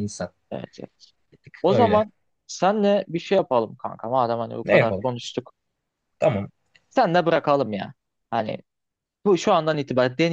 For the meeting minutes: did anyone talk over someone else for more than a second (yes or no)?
no